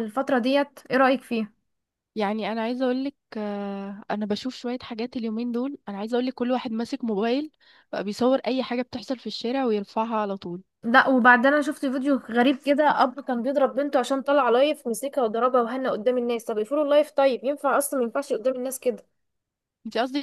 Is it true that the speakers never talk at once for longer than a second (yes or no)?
yes